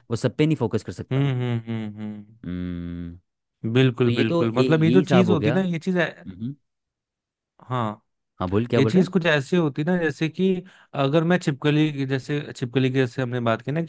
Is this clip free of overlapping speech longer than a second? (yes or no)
no